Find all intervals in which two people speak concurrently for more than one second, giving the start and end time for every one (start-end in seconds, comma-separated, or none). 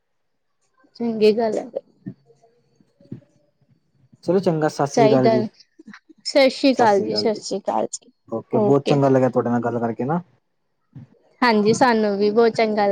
none